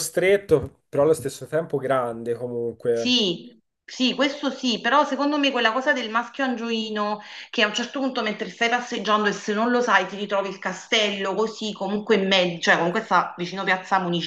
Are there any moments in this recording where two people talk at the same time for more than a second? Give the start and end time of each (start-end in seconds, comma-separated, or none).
none